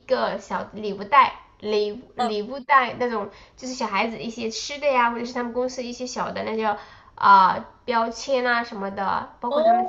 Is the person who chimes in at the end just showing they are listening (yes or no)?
yes